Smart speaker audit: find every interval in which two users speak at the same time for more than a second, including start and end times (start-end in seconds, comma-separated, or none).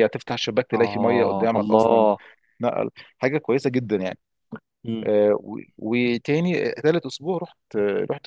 0.7-2.1